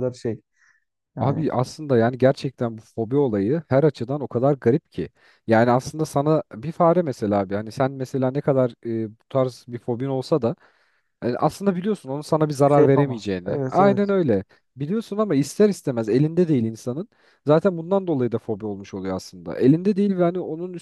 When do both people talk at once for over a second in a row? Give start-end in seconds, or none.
12.6-14.1